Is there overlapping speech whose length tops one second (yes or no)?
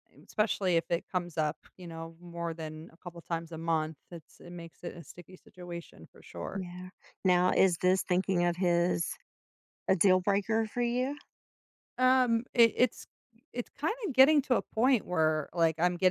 no